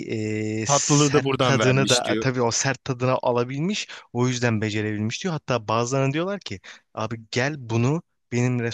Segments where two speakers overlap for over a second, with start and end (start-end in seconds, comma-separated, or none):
0.7-2.3